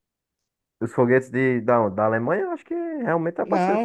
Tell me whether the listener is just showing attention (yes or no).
no